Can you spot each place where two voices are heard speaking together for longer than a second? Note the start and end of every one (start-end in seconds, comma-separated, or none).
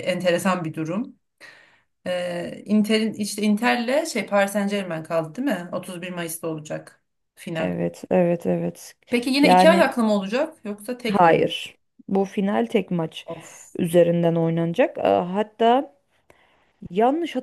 none